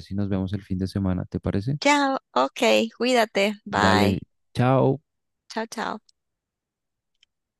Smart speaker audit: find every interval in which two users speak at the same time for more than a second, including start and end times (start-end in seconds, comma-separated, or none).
none